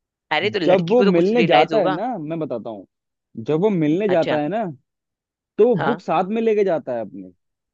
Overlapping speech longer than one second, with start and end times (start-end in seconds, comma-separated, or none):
0.7-2.0